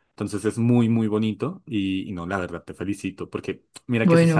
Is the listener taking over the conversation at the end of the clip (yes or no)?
no